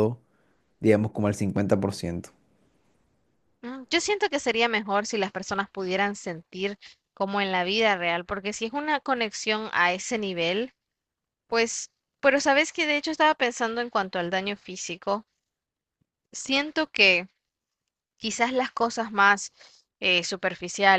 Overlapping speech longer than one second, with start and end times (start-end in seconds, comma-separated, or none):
none